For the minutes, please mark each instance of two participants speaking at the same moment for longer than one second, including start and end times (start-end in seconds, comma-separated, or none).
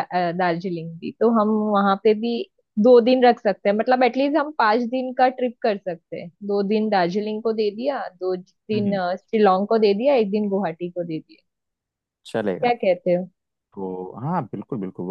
none